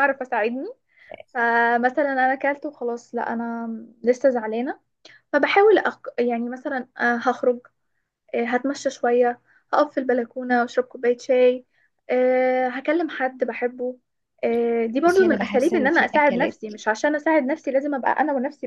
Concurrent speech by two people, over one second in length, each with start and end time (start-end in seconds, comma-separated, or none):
15.1-16.6